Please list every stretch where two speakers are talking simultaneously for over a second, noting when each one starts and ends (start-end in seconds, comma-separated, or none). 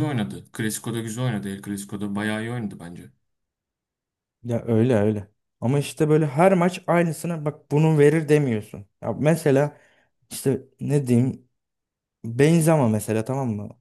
none